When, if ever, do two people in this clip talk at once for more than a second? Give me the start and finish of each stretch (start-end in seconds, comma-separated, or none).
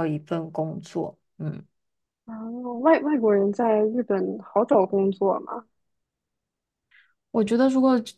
none